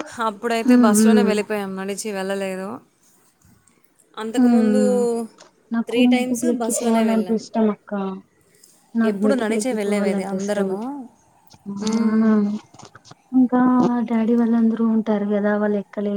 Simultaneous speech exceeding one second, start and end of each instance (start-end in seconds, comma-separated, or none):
5.9-7.4, 9.1-10.7